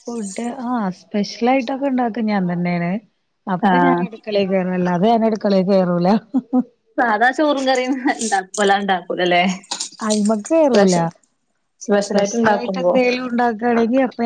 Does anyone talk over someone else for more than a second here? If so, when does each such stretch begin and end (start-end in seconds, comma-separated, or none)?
none